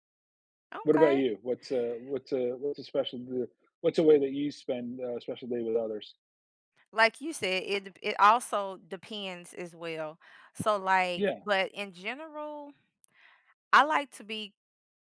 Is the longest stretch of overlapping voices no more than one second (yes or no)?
yes